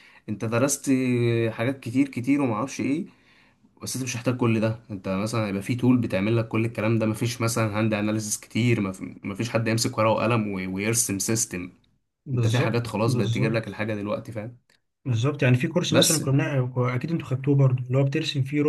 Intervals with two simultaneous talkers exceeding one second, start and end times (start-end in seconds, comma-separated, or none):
12.3-13.8